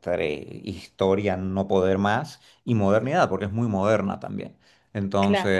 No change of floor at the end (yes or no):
yes